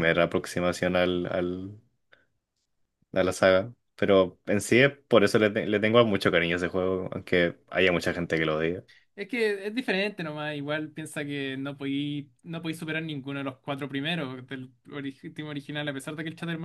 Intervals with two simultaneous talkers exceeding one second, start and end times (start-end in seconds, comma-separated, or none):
none